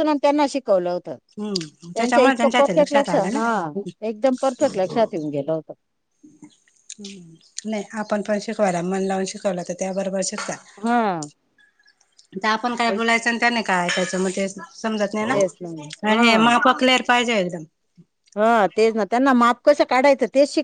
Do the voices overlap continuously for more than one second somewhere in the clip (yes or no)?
yes